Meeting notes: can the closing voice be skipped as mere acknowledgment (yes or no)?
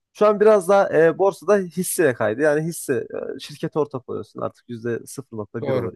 yes